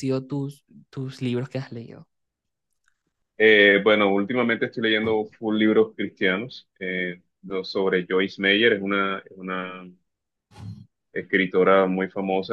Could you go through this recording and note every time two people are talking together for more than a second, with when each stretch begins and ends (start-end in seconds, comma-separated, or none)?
none